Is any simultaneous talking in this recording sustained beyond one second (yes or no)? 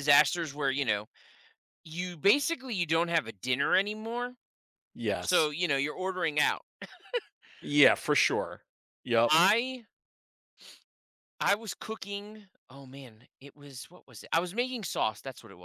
no